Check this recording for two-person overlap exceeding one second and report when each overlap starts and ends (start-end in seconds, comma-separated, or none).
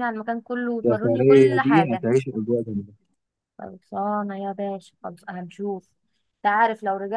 0.8-2.1